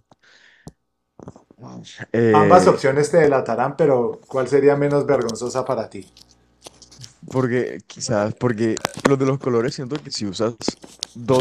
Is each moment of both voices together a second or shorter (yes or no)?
yes